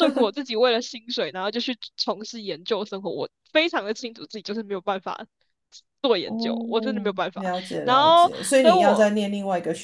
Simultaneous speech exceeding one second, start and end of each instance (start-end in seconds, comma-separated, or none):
6.2-9.1